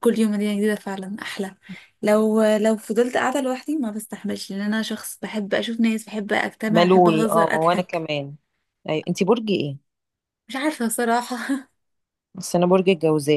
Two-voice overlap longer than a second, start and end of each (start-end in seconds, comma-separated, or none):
6.7-8.1